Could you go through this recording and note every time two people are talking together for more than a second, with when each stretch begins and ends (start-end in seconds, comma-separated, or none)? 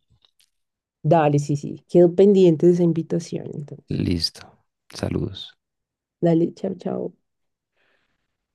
none